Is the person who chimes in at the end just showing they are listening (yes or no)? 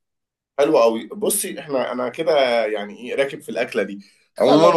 yes